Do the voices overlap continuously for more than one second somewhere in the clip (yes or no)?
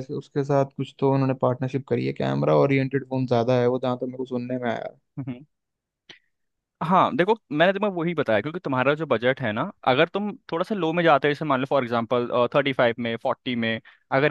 no